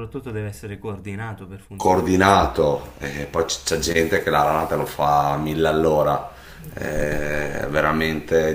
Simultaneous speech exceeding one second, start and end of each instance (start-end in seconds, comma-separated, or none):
none